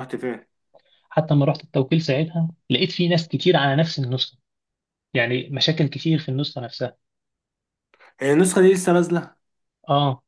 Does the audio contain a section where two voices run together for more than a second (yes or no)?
no